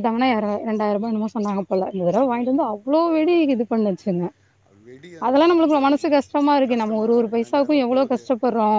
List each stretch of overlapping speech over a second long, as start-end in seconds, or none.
6.7-8.2